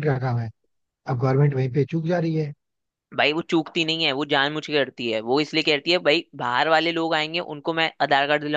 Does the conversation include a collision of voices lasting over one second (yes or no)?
no